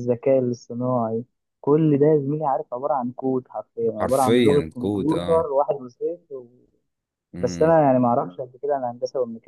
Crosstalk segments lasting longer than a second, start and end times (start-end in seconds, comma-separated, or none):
4.0-5.5